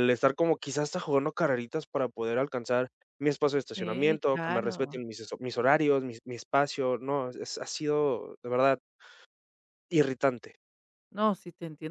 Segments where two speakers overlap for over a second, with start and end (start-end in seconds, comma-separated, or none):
3.7-5.0